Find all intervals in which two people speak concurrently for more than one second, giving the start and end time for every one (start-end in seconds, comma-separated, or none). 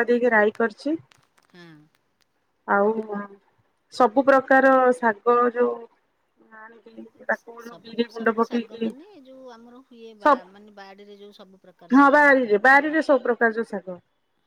none